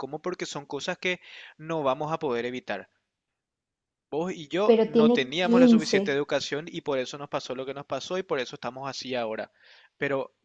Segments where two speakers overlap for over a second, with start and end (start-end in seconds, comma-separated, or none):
4.7-6.2